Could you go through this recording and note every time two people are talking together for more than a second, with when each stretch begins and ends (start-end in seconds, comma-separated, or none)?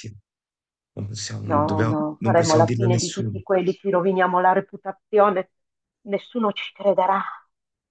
1.4-3.4